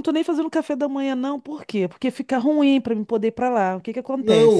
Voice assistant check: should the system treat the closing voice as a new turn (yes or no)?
yes